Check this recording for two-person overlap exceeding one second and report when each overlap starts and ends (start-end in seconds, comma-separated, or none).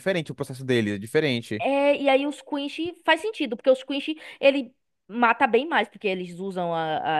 none